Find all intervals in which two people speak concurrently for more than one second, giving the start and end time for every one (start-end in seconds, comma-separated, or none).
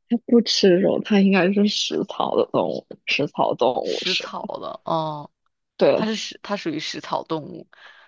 none